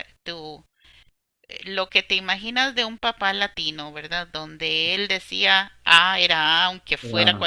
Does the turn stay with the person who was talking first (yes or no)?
yes